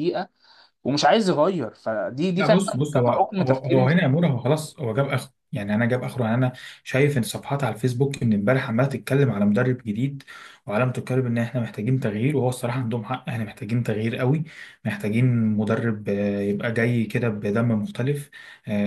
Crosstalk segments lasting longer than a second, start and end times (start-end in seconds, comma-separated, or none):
2.4-4.0